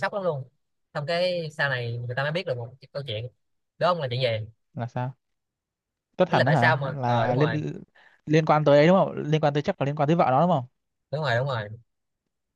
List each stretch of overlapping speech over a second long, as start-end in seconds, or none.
6.3-7.6